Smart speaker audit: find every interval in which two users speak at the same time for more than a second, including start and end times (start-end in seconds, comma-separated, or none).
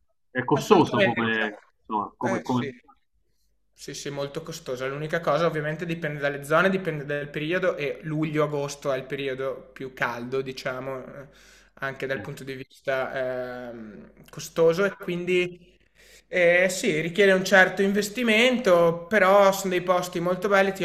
0.5-2.7